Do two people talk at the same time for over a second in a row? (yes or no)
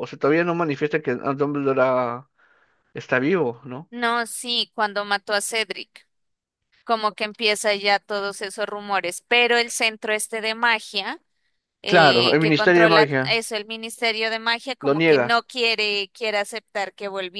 yes